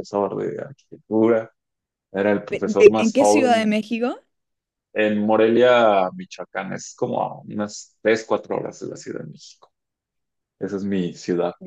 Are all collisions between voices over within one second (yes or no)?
no